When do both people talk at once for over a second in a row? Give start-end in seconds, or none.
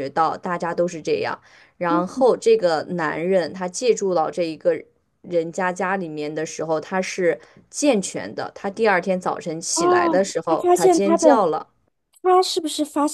9.7-11.4